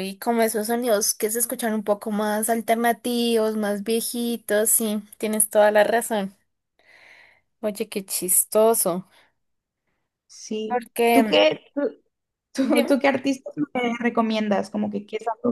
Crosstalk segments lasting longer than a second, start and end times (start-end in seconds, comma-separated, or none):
none